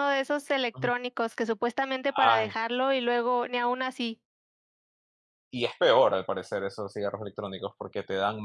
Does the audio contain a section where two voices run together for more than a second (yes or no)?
no